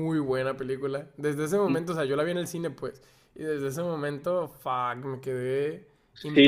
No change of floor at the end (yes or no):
no